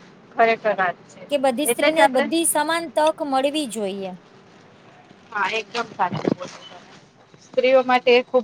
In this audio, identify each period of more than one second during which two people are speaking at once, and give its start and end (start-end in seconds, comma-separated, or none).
none